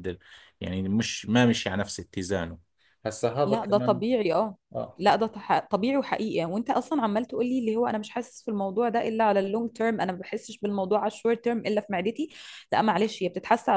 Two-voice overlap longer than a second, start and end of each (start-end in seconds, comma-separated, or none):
none